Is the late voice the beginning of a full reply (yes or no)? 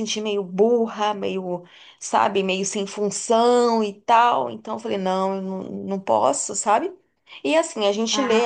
no